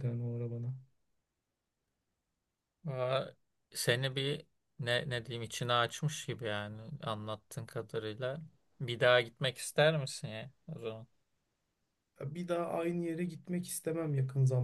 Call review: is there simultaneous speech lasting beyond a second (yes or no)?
no